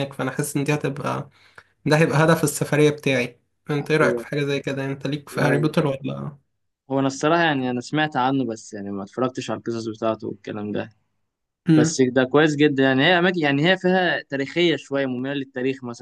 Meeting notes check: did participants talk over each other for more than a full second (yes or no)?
no